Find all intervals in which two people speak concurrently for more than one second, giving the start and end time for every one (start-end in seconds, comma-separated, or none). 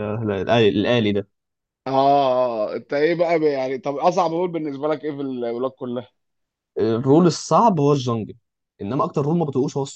none